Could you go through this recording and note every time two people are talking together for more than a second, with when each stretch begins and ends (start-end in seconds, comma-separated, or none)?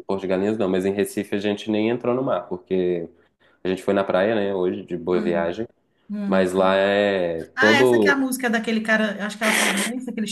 none